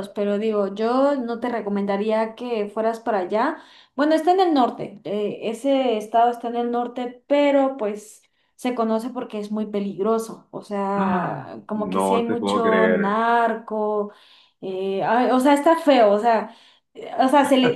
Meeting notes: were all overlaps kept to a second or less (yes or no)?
no